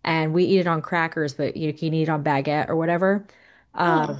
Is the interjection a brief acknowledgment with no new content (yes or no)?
yes